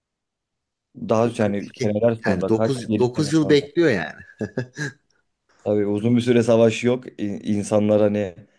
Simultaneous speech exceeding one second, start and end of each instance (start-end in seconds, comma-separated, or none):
1.1-3.6